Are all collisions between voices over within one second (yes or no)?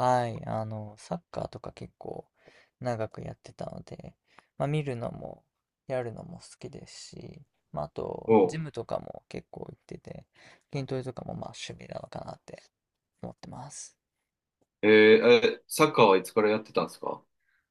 yes